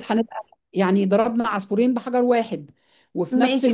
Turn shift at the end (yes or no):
yes